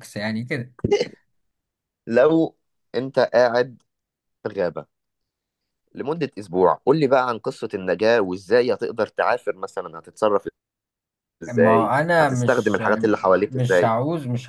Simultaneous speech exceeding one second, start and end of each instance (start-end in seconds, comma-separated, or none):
11.5-12.8